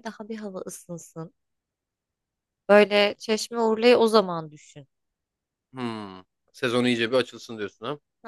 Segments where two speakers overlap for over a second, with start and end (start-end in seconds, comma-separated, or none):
none